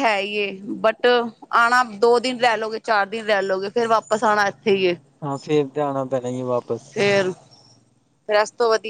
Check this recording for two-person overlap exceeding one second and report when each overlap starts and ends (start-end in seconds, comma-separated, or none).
none